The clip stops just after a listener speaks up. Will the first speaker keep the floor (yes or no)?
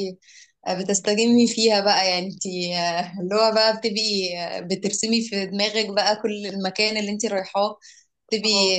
yes